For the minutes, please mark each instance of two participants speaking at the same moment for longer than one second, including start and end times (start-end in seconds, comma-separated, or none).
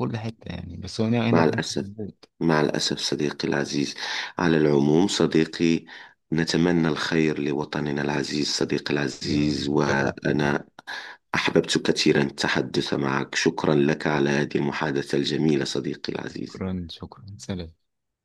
9.2-10.6